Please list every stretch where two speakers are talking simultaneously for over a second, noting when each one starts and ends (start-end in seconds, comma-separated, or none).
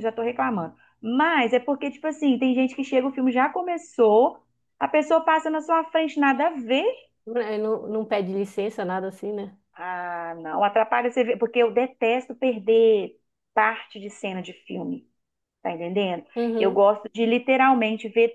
none